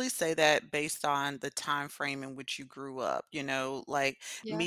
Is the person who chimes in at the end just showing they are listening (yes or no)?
yes